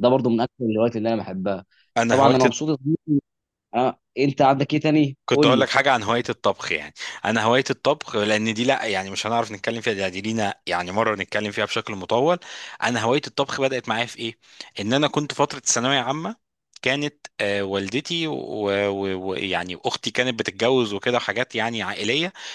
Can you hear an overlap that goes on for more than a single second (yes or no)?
no